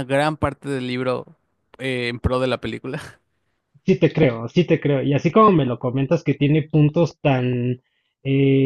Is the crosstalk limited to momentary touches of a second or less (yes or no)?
yes